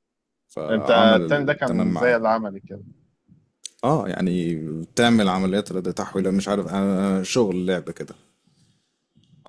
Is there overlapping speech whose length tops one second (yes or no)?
yes